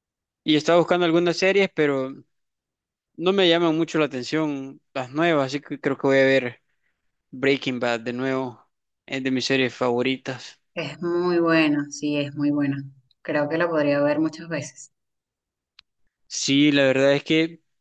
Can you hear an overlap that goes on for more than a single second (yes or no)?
no